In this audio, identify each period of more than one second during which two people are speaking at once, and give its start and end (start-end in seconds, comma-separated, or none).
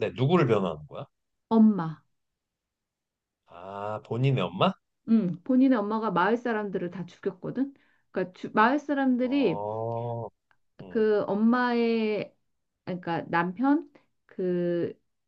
none